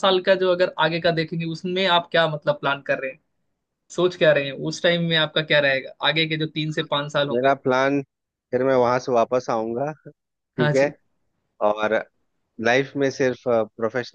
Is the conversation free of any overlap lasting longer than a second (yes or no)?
yes